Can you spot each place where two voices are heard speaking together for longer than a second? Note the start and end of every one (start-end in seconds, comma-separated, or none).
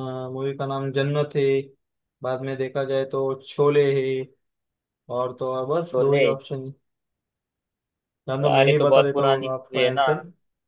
8.4-10.1